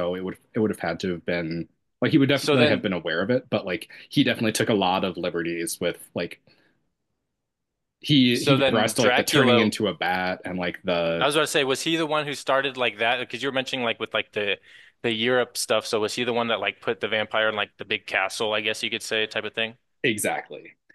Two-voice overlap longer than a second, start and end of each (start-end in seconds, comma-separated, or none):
8.3-9.7